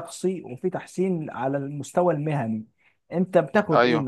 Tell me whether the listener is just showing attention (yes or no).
yes